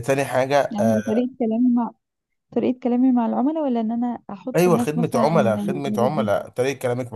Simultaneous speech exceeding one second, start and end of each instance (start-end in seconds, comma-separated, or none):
4.6-6.3